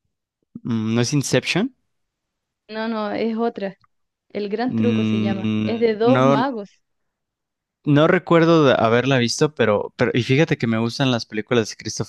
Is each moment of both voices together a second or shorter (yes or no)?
no